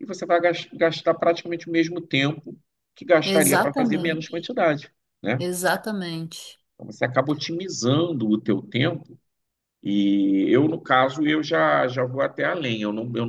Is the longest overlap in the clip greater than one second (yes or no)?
yes